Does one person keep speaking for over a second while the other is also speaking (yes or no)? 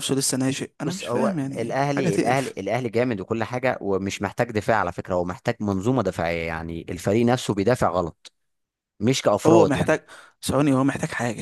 yes